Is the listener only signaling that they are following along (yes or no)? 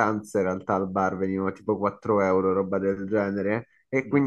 yes